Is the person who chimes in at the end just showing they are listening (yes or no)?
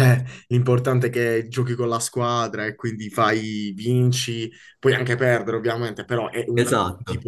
yes